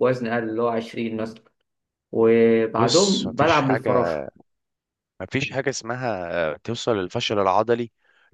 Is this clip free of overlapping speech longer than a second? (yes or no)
no